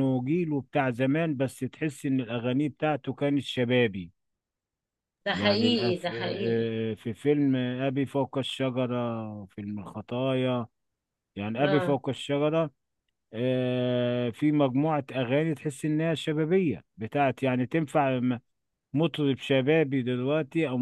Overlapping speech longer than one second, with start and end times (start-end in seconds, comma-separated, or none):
5.3-6.7